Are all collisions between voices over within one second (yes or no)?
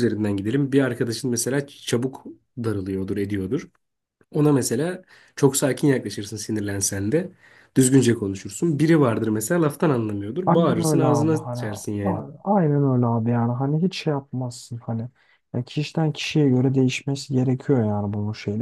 no